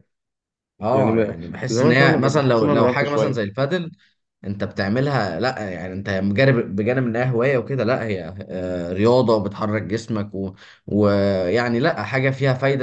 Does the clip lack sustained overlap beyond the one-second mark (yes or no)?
no